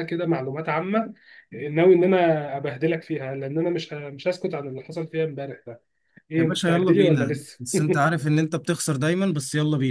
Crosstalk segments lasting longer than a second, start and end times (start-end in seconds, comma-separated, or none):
6.4-7.6